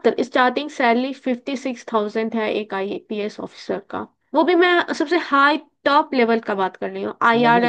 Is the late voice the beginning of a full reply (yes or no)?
yes